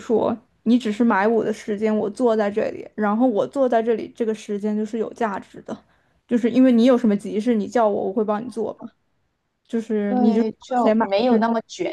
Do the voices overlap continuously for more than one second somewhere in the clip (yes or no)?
yes